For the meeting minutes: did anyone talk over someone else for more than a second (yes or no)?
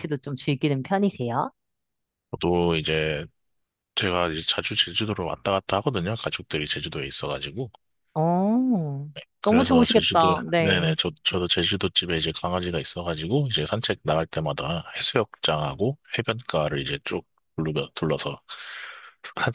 yes